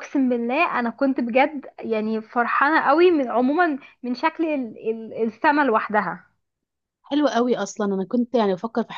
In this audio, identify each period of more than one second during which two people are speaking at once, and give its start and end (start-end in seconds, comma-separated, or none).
none